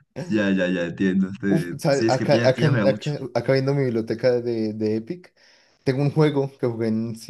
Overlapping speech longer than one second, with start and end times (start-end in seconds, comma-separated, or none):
1.5-3.1